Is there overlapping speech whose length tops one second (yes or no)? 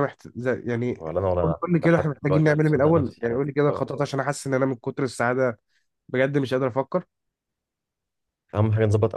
yes